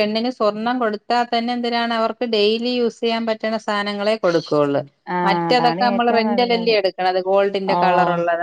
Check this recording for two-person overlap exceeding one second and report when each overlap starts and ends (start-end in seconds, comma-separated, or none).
5.3-6.7